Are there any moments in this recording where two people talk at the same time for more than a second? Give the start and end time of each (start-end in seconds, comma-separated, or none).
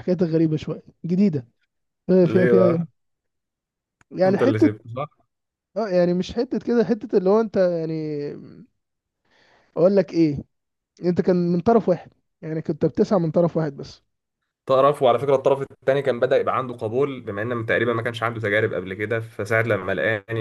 none